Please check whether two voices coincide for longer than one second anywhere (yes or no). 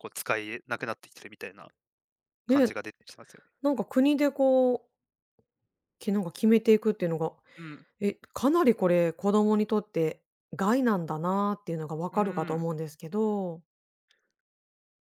no